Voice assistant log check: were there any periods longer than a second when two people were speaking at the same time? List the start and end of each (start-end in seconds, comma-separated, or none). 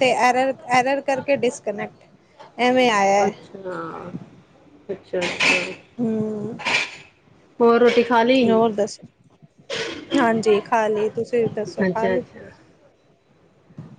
none